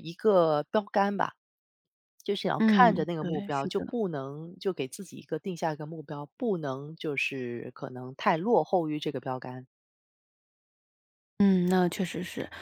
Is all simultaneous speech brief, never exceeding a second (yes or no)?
no